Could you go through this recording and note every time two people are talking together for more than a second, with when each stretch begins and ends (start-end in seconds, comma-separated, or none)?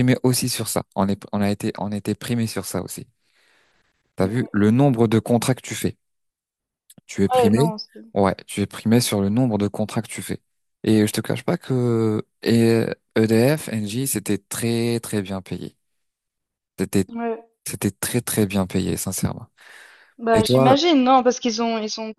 none